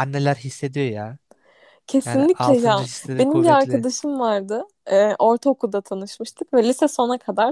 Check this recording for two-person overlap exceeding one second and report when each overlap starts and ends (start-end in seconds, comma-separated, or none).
2.0-3.9